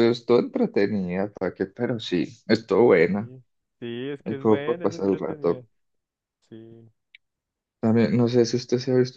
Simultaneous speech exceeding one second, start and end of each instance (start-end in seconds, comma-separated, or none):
4.2-5.6